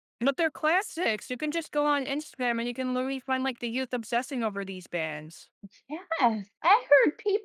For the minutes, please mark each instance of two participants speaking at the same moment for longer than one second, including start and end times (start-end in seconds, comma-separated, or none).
none